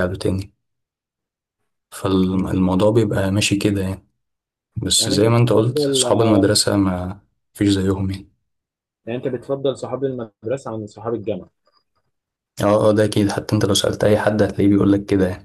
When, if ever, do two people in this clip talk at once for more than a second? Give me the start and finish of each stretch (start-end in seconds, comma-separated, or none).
5.0-6.5